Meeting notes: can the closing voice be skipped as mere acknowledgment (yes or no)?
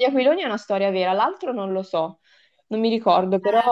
no